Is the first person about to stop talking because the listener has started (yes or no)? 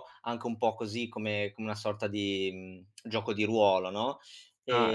no